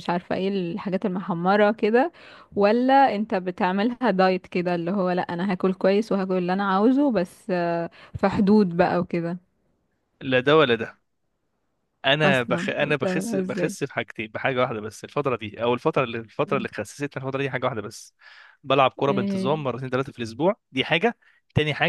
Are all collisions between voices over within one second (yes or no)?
no